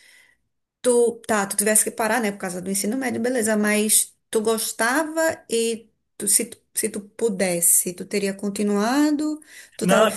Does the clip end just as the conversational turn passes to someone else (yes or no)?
no